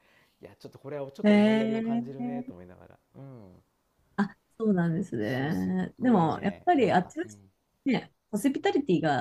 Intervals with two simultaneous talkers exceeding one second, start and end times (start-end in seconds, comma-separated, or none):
1.2-2.5, 5.2-7.4